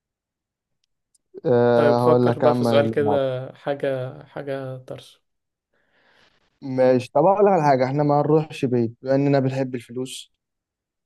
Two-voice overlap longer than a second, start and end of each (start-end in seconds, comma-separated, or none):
1.7-3.4